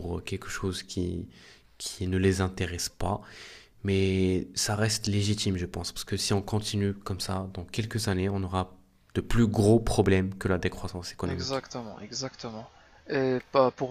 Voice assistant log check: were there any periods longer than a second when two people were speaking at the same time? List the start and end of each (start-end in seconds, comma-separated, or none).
none